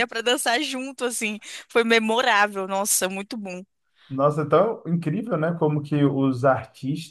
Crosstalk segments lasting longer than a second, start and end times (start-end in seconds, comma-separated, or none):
none